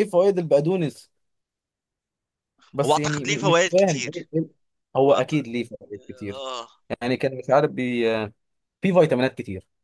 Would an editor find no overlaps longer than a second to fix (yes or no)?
no